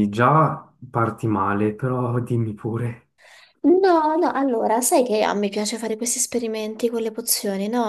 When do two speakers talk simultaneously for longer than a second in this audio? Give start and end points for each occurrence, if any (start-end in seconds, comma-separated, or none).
none